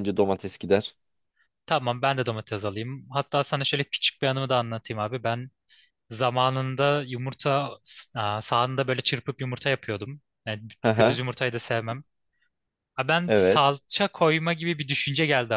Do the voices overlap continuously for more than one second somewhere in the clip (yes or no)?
no